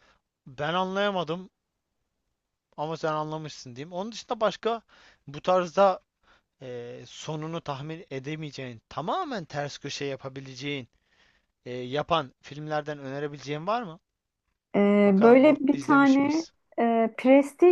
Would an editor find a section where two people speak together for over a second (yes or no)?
yes